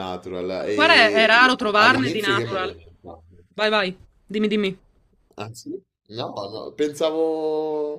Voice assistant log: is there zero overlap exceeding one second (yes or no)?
no